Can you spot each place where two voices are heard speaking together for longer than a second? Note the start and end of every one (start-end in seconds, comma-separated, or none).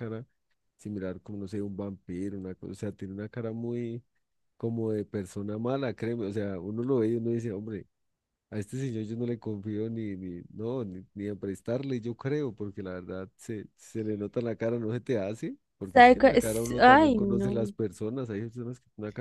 15.9-17.6